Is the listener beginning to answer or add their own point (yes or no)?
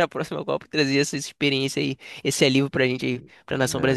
yes